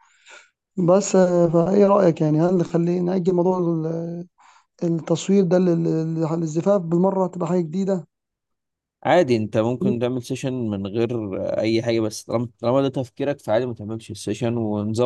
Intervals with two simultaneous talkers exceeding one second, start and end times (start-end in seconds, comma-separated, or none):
none